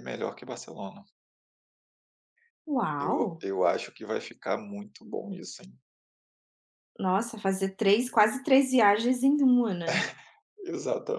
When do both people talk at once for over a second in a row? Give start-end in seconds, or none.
none